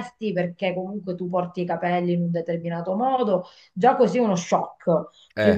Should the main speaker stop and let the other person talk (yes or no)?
no